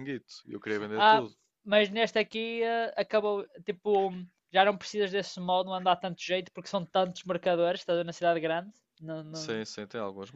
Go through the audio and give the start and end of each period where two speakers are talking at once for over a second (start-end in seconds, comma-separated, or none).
none